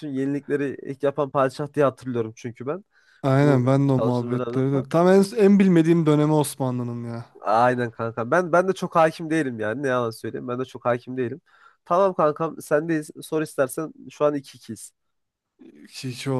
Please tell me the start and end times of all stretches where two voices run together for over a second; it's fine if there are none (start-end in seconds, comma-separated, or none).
3.4-4.9